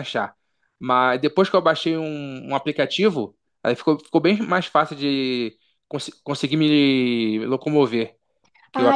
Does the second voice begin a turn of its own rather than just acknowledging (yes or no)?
no